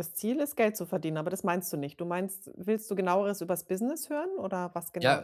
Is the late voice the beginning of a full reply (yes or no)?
yes